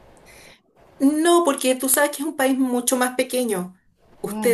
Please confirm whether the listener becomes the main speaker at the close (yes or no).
no